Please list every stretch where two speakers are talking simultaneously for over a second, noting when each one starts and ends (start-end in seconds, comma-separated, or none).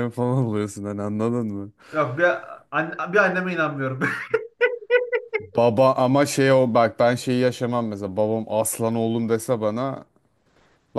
none